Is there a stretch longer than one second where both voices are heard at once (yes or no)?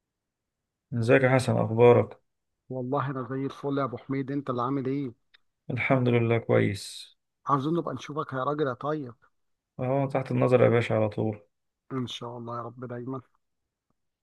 no